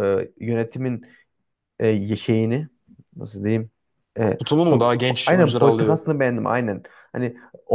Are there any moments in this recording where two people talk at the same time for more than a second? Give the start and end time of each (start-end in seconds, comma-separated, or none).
4.4-6.0